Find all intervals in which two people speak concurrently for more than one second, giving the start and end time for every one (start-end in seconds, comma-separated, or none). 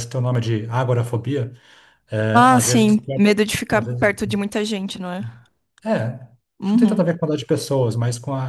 2.3-4.1